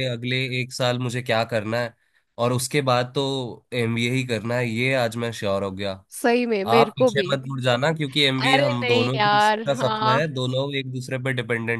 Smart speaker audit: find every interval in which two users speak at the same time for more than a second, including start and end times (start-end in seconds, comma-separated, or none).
8.4-10.4